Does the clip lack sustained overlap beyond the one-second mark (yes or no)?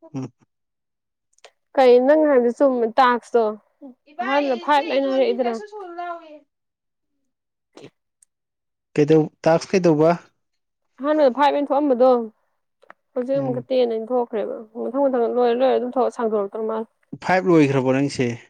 no